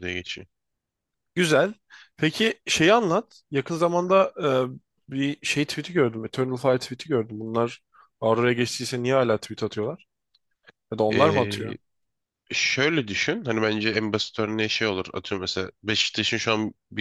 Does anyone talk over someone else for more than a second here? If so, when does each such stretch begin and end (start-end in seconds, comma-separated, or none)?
none